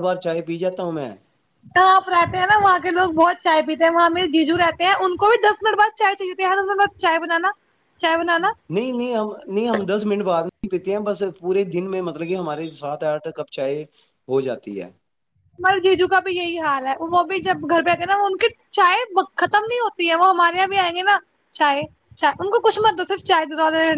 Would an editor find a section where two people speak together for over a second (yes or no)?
no